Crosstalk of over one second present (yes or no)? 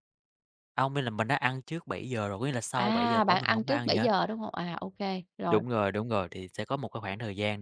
yes